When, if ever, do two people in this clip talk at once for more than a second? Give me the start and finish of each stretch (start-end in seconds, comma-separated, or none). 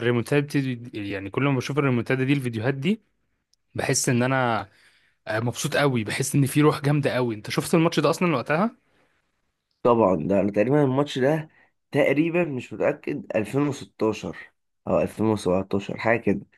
none